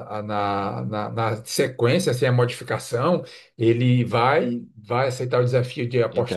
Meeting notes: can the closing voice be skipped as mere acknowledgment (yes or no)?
yes